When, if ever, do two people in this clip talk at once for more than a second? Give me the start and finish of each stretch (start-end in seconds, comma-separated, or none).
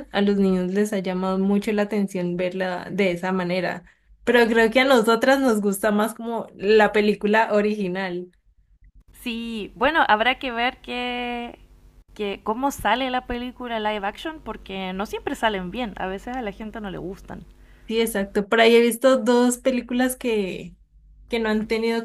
none